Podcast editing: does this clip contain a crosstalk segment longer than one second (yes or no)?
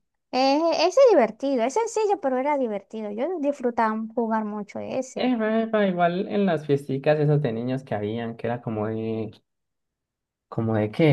no